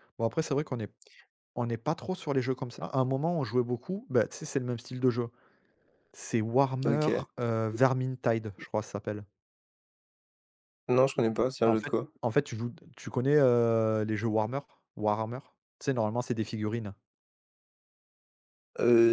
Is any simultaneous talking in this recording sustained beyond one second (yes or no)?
no